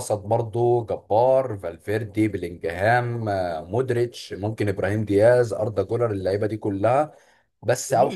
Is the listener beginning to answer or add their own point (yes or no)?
no